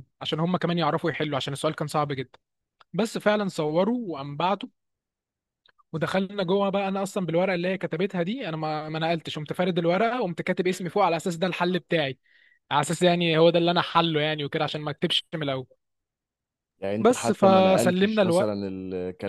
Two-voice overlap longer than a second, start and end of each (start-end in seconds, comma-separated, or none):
17.0-18.2